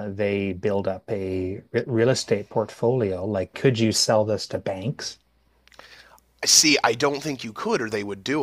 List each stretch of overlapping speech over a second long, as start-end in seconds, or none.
none